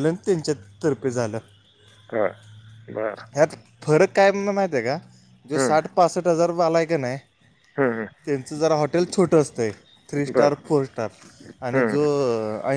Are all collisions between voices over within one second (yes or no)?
yes